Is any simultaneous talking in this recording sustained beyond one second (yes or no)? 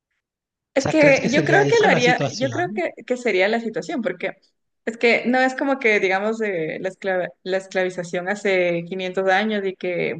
yes